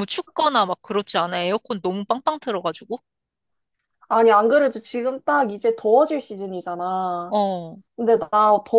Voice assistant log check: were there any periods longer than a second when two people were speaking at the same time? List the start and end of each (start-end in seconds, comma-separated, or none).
none